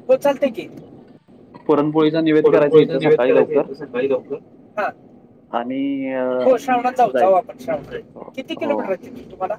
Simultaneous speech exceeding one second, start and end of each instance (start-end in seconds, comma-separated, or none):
2.4-3.6